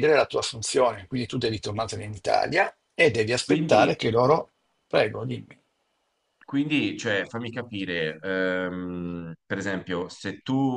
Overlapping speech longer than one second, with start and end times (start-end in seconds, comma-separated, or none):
none